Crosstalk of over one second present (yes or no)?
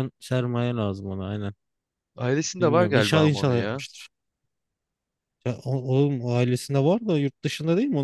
yes